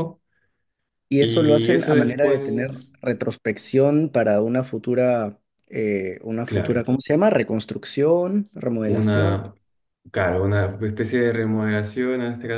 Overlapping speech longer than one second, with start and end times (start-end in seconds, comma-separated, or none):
1.2-2.9